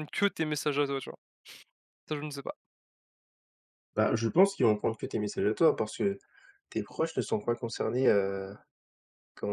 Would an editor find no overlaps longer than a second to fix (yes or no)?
yes